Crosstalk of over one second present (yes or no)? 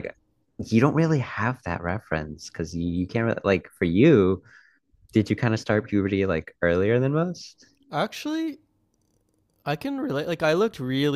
no